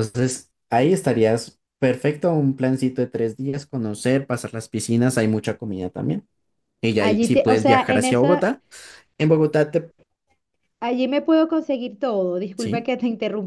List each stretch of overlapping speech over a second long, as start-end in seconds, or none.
7.0-8.5